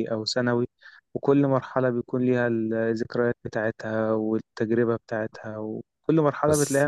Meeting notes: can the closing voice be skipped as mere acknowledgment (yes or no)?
no